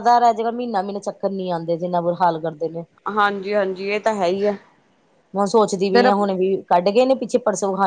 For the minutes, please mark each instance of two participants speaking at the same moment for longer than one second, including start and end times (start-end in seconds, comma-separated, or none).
none